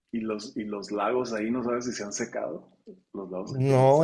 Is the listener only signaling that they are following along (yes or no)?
no